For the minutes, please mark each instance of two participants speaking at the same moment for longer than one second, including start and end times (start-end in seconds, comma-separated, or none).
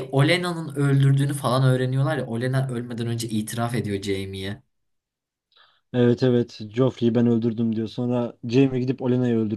none